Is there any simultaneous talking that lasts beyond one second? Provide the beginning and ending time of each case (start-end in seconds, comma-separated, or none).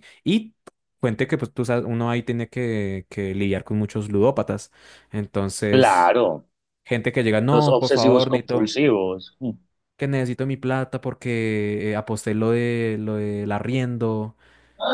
7.5-8.7